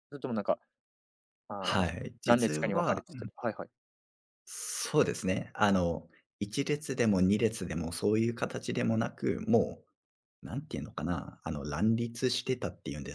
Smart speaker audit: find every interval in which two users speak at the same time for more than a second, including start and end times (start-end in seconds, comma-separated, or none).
1.6-3.0